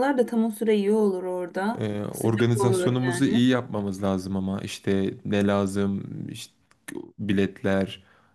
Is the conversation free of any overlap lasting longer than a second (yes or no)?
no